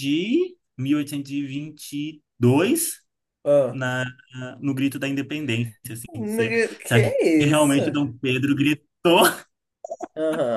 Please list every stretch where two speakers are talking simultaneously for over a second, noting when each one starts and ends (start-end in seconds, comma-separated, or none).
6.1-7.8